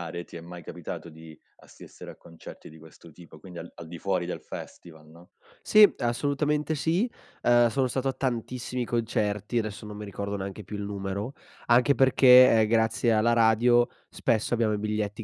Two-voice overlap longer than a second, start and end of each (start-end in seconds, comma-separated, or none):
none